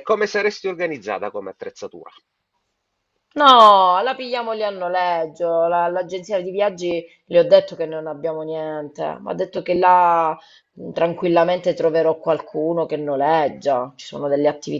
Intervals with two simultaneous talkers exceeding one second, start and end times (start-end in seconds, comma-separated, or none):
none